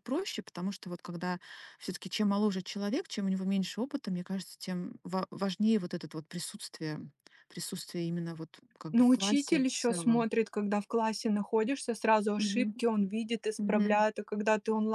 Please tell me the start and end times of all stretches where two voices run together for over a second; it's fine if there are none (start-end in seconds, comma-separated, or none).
8.9-10.3